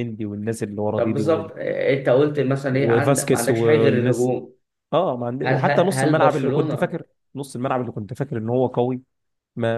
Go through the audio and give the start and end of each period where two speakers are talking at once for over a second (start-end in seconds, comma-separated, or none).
2.7-4.3, 5.4-7.0